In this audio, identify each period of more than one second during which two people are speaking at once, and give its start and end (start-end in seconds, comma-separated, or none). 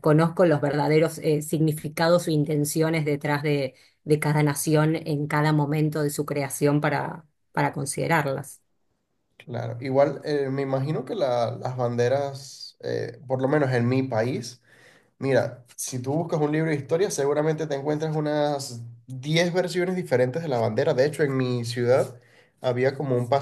none